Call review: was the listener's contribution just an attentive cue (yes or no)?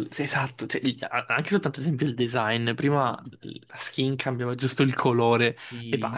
yes